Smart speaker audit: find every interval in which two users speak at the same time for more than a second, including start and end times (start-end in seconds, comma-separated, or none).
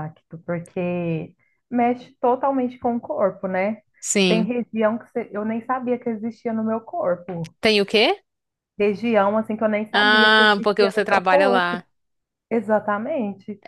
9.9-11.8